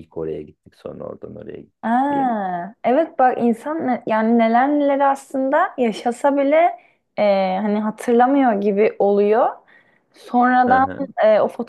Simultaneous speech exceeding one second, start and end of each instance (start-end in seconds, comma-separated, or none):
none